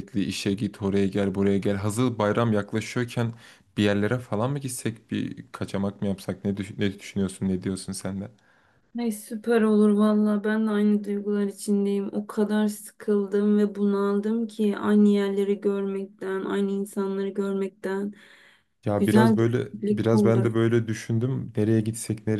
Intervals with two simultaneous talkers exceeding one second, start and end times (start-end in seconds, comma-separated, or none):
18.9-20.5